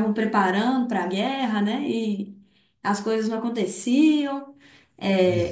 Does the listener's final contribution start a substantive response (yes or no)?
no